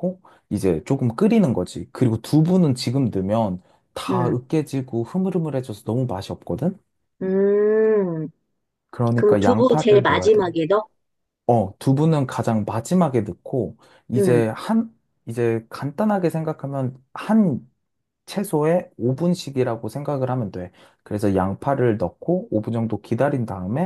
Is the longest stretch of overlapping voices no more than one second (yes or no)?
no